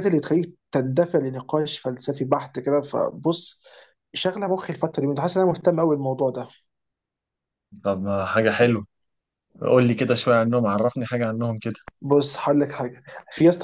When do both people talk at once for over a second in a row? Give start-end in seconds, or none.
none